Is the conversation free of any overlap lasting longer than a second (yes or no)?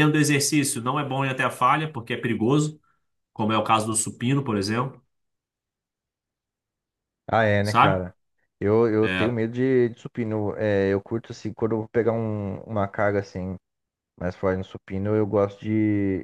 yes